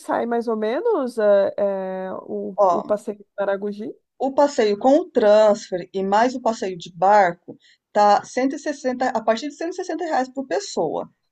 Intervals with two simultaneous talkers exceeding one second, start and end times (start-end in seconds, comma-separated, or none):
none